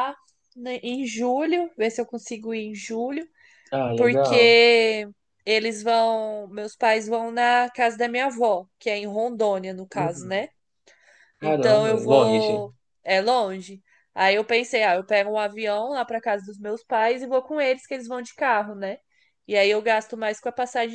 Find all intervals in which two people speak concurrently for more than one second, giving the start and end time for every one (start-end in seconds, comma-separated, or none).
11.4-12.6